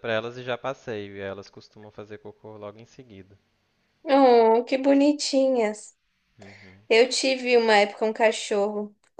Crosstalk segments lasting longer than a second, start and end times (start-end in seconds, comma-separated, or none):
none